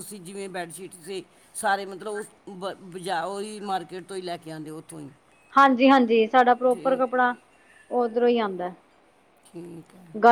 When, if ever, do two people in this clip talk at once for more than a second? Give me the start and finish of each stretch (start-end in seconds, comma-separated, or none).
none